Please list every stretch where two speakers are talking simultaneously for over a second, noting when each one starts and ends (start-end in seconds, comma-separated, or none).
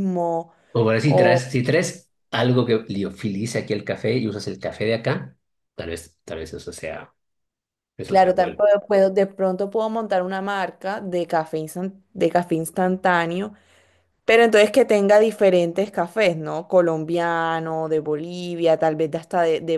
none